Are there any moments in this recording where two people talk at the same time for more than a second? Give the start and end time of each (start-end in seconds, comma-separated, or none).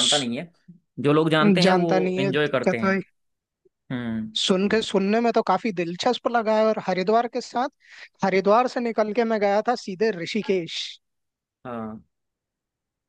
1.6-3.0